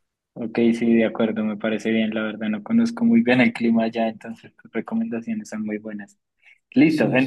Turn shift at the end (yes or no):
no